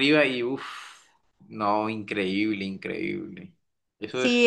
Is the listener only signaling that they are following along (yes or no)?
no